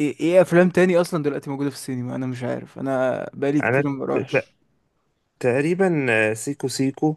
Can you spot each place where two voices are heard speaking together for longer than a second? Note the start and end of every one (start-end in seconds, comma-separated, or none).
none